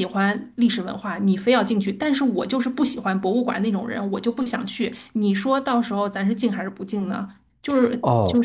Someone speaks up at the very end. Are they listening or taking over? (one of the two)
taking over